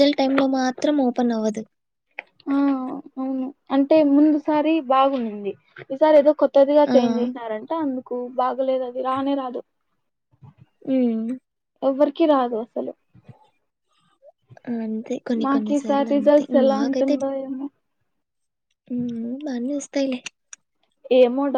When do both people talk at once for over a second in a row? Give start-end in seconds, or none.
15.4-17.2